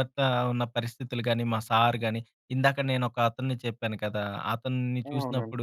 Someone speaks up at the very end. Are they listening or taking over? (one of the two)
listening